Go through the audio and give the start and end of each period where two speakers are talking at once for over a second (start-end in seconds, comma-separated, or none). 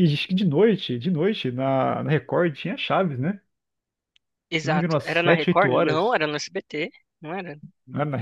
4.6-6.2